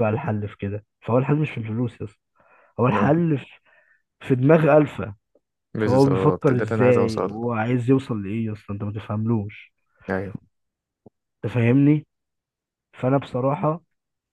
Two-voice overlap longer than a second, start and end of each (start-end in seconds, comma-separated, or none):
5.8-7.4